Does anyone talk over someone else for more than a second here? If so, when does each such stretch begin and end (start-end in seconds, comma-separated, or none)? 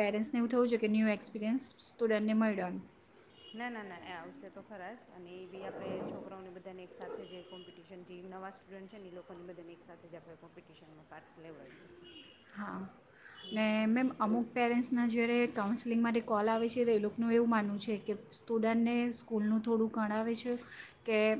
none